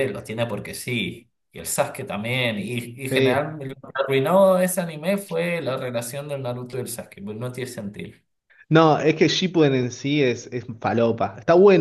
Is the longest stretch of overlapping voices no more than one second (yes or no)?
yes